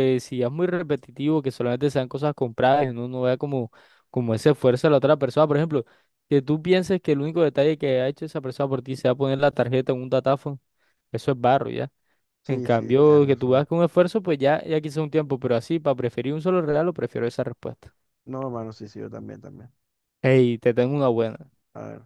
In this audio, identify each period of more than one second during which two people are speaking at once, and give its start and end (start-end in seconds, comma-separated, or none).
12.4-13.7